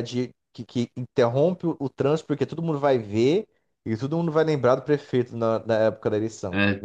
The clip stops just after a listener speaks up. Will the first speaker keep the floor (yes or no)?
no